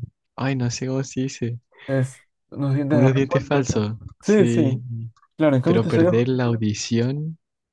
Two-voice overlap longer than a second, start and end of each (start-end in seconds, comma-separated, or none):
2.9-4.8